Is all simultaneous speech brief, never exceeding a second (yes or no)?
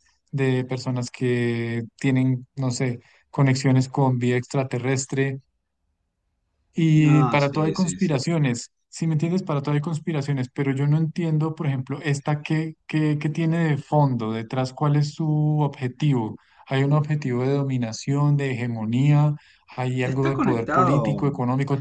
no